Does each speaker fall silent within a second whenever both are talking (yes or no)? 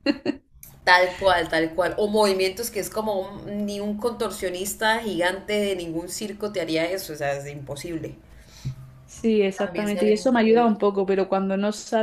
no